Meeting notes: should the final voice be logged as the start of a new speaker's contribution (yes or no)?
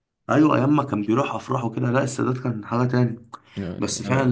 no